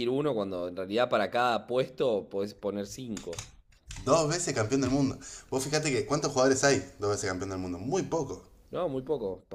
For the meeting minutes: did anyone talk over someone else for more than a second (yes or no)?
no